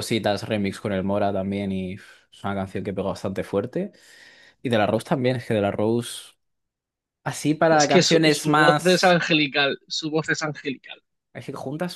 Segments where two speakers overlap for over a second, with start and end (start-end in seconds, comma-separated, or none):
7.7-9.2